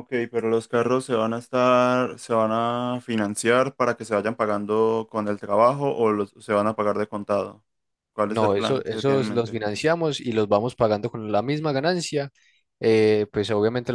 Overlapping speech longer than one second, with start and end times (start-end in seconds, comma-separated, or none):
8.3-9.6